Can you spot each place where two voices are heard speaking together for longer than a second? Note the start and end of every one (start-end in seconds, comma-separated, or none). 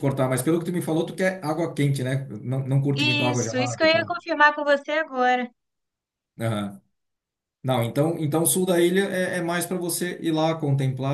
3.0-4.2